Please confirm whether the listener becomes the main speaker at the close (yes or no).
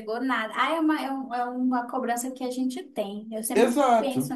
yes